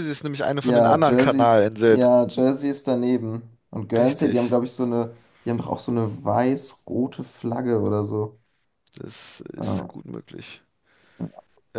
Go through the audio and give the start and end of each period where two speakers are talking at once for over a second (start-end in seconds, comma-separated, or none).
0.6-2.0